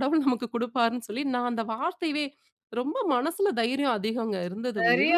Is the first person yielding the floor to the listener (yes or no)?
yes